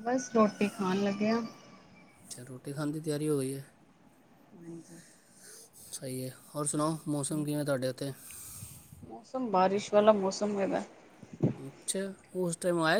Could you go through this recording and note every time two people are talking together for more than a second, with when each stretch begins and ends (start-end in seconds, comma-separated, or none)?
none